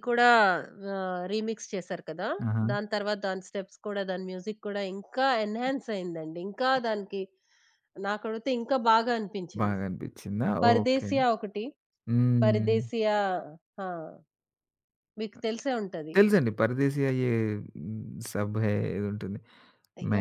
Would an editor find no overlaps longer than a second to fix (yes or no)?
yes